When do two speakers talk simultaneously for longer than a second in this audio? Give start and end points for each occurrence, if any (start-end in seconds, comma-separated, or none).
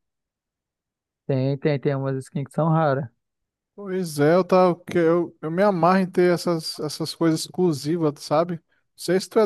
none